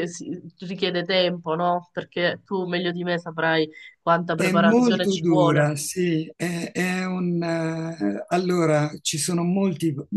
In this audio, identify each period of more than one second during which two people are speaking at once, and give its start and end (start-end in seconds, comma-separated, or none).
4.3-5.7